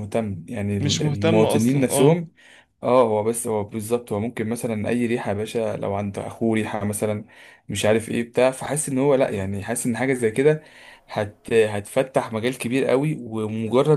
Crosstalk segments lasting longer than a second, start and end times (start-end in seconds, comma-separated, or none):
0.8-2.3